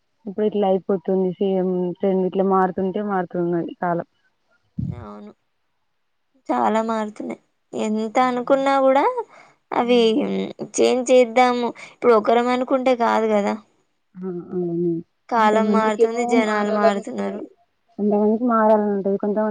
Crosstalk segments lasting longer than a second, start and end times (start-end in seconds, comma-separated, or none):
15.3-17.4